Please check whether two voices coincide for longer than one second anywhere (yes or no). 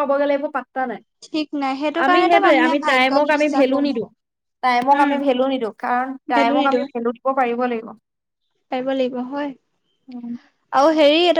yes